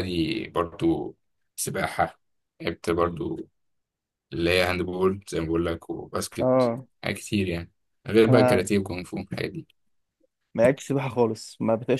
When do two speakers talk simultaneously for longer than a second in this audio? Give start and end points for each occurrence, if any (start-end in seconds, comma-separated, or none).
none